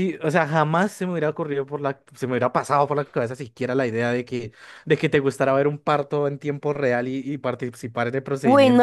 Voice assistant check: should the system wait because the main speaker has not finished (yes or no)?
no